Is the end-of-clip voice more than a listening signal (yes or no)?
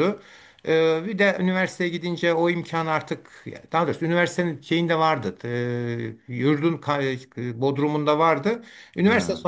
no